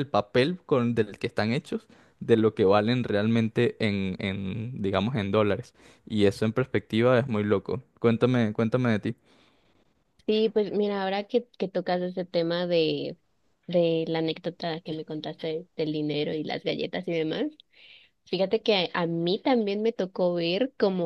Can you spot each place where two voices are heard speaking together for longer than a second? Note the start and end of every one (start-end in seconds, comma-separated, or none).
none